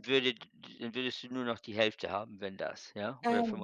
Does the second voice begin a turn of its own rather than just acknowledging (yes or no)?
yes